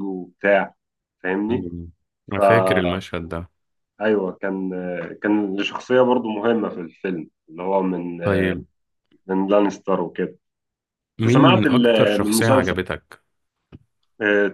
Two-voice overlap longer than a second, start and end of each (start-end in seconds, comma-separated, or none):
11.2-12.7